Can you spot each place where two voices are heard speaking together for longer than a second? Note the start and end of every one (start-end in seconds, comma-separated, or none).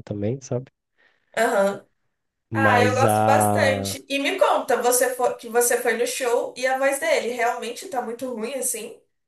2.5-4.0